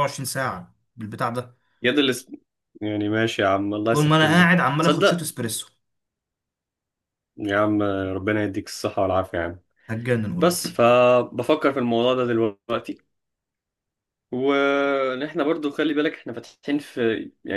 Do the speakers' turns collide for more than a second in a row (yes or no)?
yes